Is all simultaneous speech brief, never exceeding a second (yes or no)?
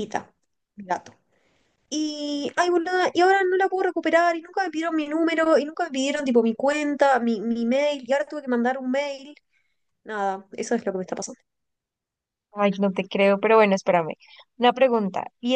yes